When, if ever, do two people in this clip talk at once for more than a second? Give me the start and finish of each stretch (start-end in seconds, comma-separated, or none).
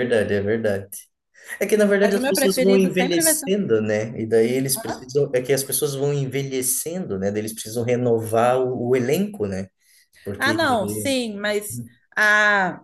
2.0-3.5